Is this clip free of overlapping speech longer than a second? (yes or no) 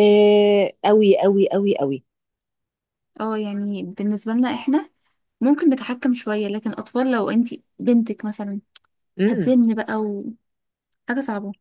yes